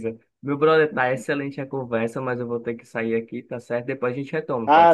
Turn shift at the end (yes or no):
yes